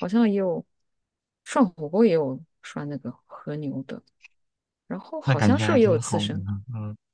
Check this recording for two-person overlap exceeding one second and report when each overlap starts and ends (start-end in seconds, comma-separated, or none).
5.2-6.5